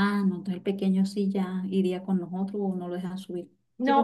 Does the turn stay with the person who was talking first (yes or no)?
no